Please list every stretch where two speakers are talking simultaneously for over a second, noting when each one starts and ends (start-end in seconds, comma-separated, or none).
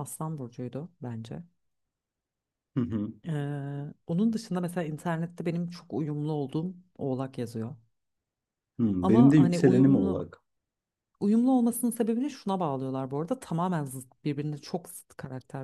9.0-10.3